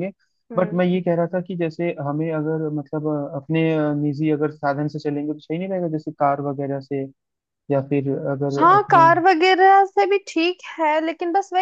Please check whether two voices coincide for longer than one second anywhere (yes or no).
no